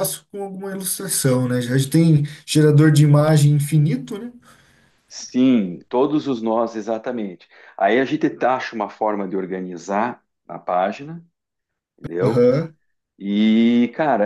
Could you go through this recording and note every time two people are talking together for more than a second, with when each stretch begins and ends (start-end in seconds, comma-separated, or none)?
none